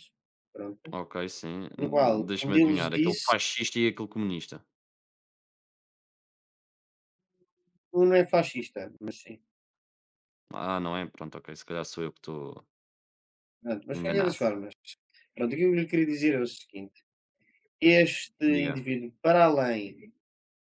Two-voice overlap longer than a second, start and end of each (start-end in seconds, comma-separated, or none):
1.8-3.3